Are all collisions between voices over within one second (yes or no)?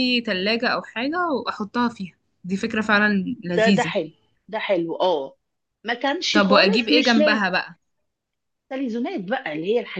no